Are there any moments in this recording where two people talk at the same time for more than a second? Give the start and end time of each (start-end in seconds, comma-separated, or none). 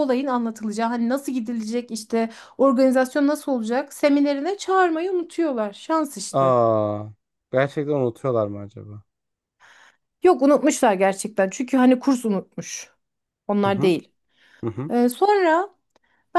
none